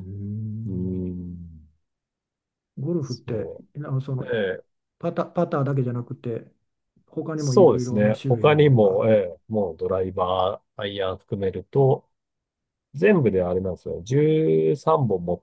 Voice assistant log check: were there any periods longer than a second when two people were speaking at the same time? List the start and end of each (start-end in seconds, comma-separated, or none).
7.4-9.1